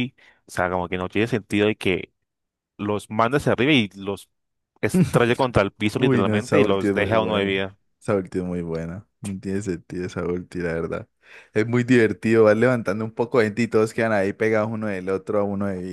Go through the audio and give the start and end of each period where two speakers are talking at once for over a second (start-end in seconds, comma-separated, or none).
6.0-7.5